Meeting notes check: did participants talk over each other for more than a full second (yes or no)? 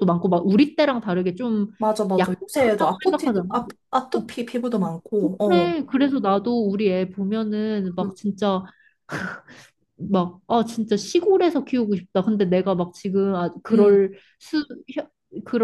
yes